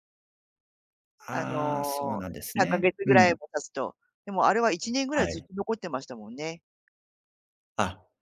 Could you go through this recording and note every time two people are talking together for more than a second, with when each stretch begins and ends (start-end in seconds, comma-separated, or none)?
1.3-3.3